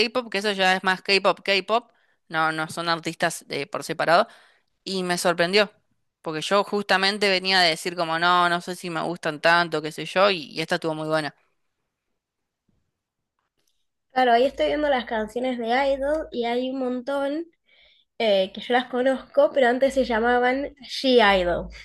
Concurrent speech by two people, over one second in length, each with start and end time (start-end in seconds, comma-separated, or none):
none